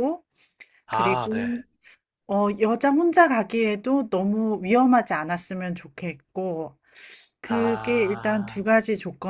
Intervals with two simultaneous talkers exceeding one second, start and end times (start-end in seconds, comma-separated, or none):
7.4-8.7